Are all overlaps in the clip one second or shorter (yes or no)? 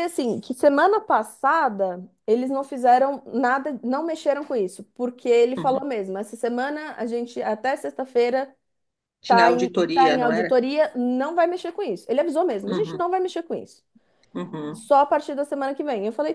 no